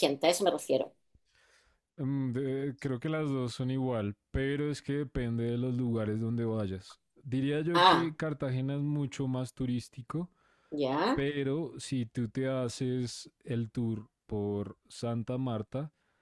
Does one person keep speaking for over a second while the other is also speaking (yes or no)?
no